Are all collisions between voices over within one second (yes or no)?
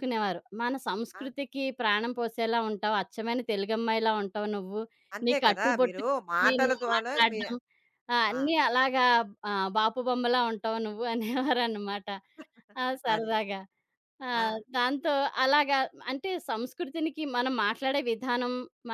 no